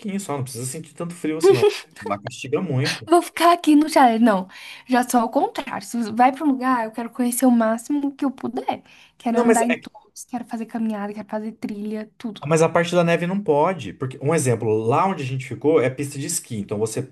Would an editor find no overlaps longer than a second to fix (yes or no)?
yes